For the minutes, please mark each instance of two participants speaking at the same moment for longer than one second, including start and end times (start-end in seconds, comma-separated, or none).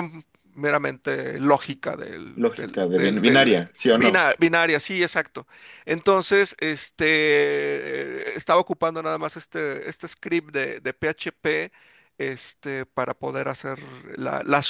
2.4-4.2